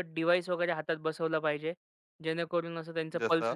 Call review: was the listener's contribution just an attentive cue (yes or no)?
yes